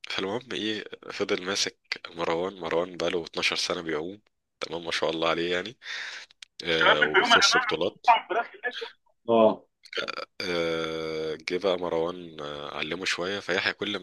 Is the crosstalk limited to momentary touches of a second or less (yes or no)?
no